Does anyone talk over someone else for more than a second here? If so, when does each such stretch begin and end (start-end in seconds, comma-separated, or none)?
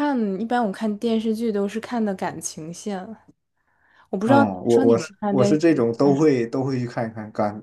4.2-6.2